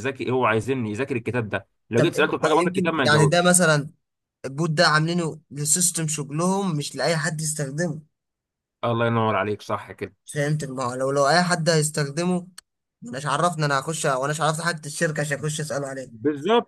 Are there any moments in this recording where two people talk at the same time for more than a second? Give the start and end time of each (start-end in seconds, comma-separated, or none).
2.0-3.6